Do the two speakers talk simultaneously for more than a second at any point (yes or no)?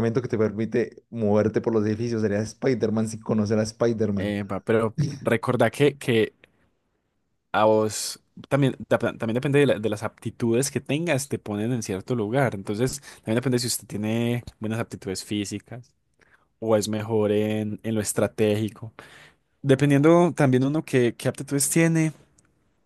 no